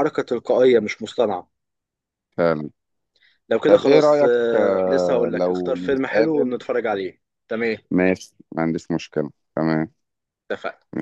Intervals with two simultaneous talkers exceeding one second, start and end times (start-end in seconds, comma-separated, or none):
3.7-6.6